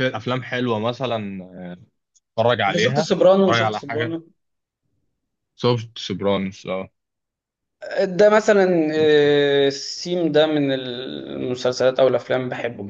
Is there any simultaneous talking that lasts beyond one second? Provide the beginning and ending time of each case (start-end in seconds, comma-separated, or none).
2.7-4.2